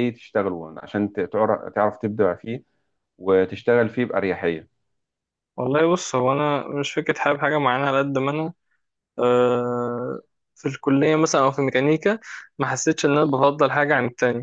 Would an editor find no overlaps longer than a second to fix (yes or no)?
yes